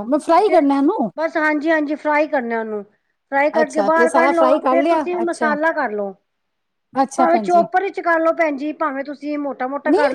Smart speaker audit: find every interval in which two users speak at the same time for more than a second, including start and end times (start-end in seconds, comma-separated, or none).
3.6-5.5